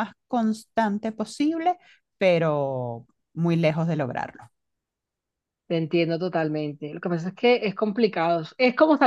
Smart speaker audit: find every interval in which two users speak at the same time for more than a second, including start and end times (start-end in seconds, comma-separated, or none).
none